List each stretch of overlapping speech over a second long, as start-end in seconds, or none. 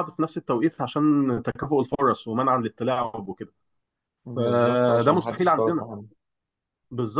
4.3-5.9